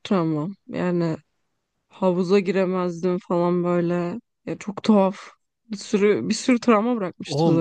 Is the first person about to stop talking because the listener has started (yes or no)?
yes